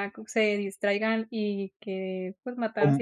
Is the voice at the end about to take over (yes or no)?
no